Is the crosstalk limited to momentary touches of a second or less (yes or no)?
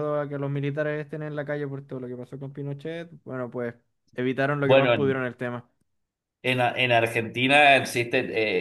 yes